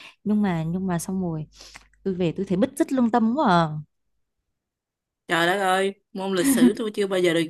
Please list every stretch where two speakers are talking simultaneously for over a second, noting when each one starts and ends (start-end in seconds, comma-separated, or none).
none